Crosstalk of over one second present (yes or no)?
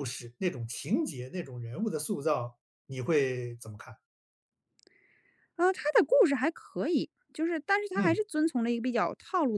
no